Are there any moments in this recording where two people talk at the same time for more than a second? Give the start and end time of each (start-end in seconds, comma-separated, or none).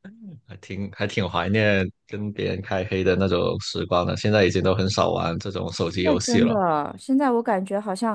none